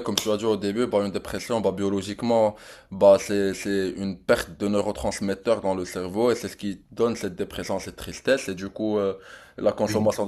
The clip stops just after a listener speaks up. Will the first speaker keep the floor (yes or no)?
yes